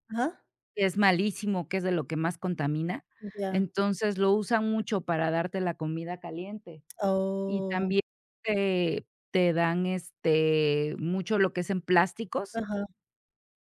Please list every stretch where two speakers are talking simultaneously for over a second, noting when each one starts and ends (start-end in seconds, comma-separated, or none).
none